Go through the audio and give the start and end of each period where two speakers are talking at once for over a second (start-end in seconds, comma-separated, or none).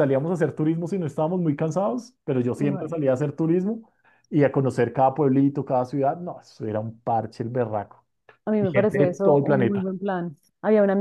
8.6-9.9